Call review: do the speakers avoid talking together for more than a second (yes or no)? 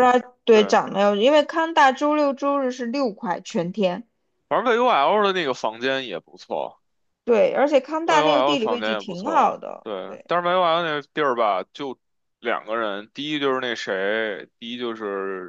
no